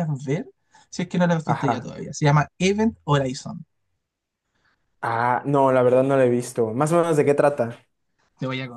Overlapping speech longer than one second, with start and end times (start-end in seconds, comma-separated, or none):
none